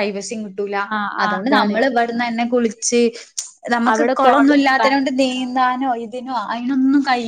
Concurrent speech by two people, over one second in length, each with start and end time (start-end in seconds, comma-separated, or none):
3.9-6.1